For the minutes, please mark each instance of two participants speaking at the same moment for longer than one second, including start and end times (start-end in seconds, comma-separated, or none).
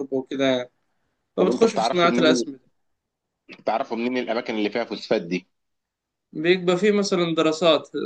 1.4-2.6